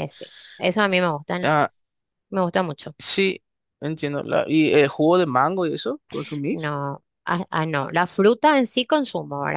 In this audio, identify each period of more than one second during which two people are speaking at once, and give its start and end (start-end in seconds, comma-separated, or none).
none